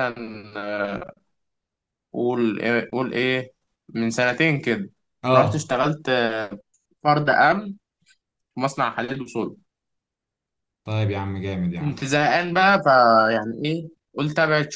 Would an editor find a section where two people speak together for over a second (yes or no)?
no